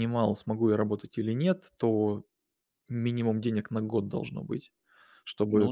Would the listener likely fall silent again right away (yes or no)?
yes